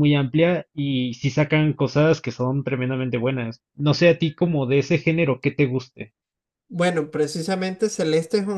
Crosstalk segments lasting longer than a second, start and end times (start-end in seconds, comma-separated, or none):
none